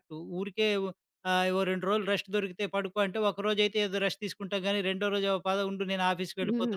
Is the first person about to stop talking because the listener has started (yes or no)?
yes